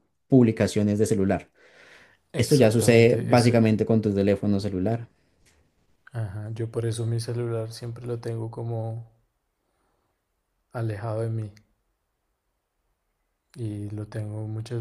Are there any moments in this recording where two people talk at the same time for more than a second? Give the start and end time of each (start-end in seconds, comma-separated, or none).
2.4-3.6